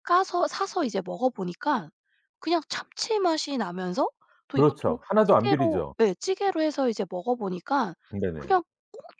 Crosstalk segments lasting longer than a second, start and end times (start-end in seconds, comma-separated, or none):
4.6-5.9